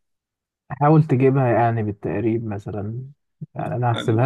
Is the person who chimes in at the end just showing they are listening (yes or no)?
yes